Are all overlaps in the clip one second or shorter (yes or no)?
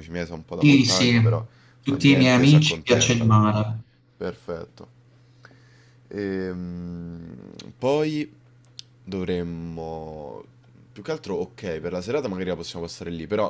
no